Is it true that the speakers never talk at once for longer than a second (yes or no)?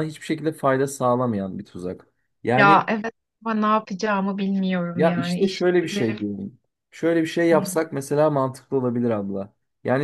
no